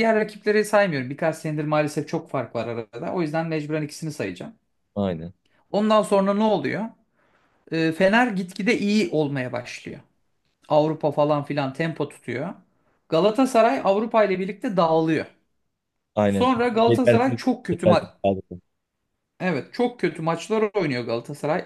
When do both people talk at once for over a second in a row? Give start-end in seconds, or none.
16.2-18.0